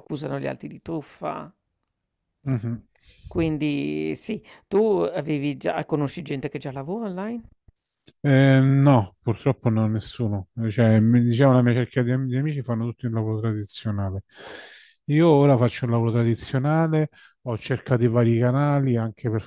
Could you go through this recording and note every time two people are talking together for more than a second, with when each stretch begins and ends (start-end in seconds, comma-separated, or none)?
none